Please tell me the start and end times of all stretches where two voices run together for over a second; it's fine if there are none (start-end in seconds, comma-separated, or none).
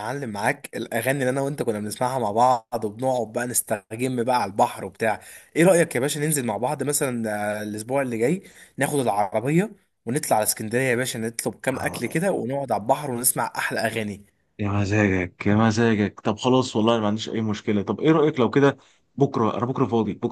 none